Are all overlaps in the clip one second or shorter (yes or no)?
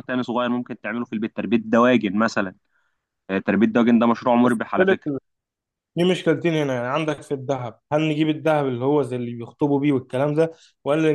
yes